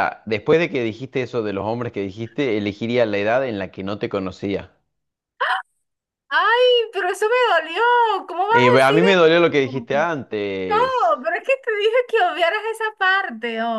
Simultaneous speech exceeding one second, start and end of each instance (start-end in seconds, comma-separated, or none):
8.5-9.9